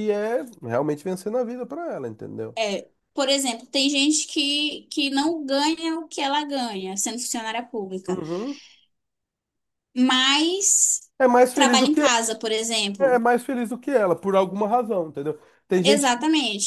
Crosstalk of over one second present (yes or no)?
no